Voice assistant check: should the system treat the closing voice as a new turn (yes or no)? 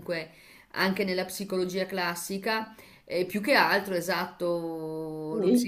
no